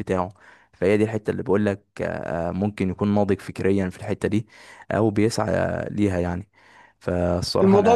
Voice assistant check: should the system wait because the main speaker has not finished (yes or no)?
no